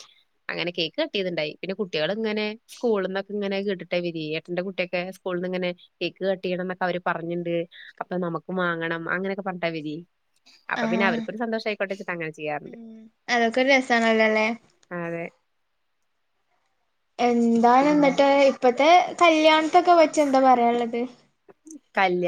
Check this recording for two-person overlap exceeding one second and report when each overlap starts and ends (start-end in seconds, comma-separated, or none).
none